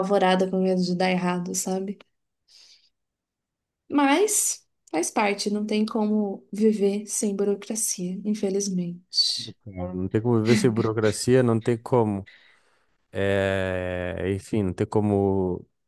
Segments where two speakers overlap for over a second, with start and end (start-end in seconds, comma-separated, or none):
none